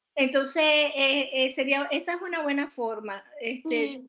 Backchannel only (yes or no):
yes